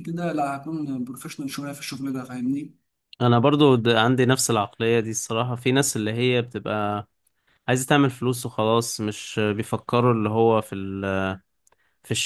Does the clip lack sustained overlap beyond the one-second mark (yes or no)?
yes